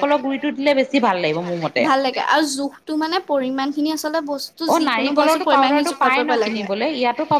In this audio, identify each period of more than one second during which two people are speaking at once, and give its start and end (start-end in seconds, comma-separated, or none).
4.7-6.7